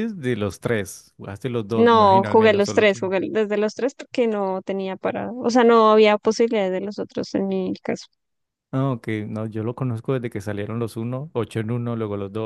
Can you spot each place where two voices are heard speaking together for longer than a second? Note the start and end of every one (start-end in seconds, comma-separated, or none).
1.7-2.9